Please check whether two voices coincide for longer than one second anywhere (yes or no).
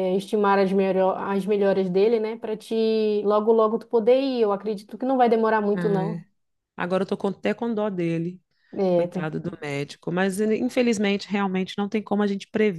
no